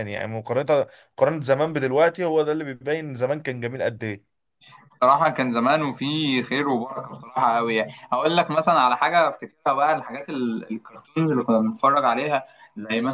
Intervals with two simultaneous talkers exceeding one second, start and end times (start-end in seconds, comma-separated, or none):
none